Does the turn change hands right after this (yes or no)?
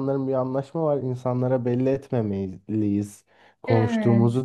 no